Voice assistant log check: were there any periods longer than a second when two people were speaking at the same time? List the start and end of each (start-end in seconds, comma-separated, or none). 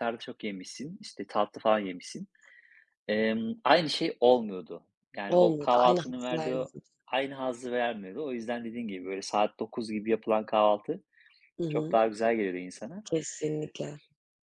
5.3-6.7